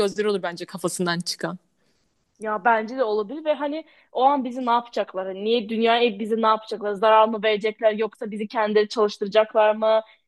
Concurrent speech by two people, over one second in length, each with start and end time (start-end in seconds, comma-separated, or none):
none